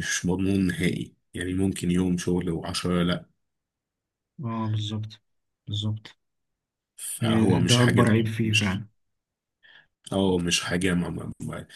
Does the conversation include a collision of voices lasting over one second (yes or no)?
yes